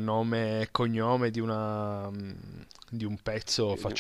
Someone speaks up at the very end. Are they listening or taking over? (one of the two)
listening